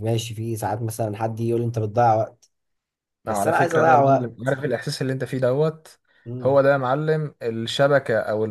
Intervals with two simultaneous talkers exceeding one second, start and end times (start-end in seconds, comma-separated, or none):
3.3-4.5